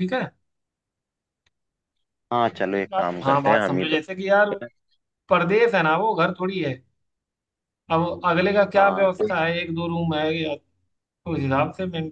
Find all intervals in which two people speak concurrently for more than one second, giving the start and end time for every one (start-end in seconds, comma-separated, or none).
2.5-4.5